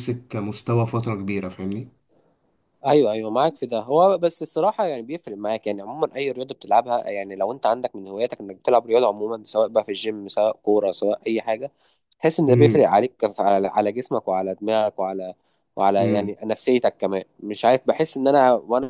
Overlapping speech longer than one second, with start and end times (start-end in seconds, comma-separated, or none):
none